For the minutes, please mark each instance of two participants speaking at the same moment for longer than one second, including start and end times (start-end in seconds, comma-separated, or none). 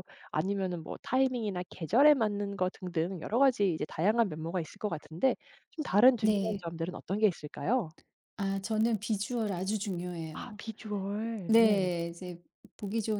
none